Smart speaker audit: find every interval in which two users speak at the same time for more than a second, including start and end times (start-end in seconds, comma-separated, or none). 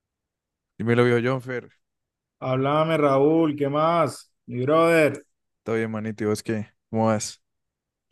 none